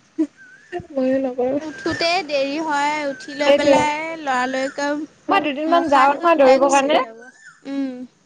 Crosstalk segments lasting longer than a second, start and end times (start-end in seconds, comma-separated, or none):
5.3-7.0